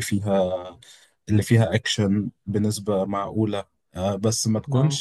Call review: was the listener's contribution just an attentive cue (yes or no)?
yes